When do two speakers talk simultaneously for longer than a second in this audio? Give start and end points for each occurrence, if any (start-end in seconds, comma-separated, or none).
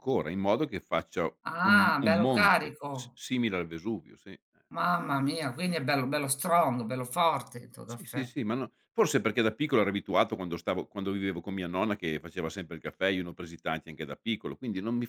1.6-3.2